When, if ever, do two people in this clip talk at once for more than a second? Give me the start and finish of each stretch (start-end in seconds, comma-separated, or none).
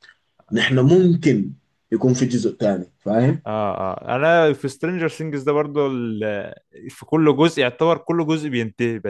none